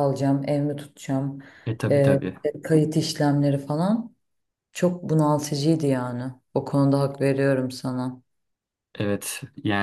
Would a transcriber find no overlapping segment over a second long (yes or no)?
yes